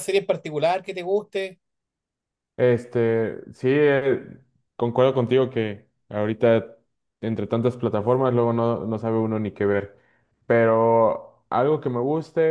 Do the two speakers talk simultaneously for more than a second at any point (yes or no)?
no